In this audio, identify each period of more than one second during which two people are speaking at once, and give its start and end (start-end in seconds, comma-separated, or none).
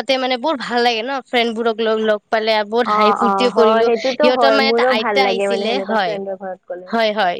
2.9-6.9